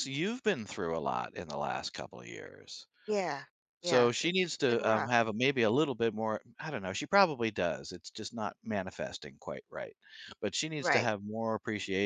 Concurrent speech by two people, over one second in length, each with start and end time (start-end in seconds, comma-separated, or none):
3.8-5.1